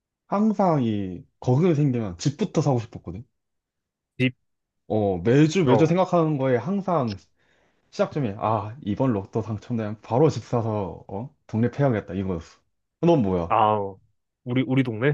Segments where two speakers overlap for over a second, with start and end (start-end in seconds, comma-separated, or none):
none